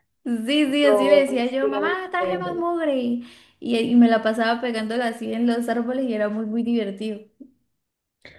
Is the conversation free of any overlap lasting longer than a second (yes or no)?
no